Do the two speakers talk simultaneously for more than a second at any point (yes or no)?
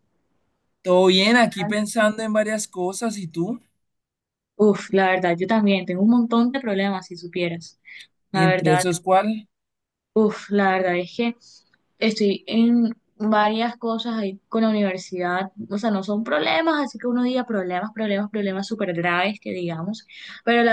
no